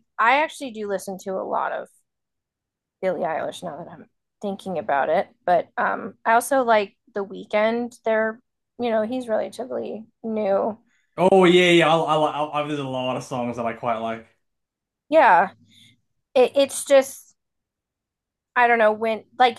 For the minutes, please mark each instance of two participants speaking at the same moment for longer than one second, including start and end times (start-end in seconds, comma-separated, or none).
none